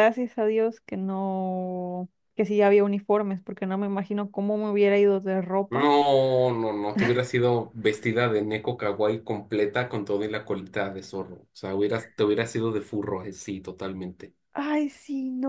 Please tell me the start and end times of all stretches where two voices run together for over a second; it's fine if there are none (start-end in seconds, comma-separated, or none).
none